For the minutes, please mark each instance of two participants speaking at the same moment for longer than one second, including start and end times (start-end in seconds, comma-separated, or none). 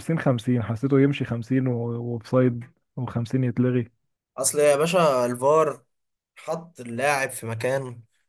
none